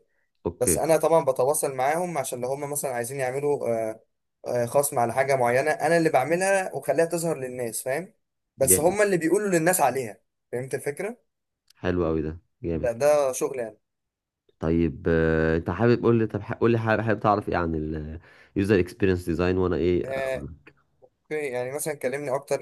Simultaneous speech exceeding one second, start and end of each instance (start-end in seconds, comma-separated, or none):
none